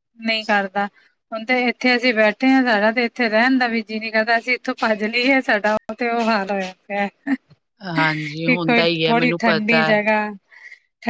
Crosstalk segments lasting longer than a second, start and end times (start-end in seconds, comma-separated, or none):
8.5-9.9